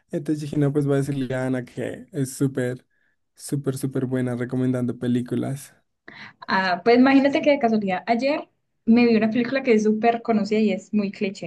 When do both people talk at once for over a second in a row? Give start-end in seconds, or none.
none